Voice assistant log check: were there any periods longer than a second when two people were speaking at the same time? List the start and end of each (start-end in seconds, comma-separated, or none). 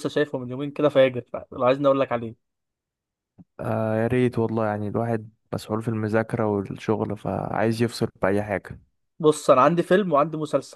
none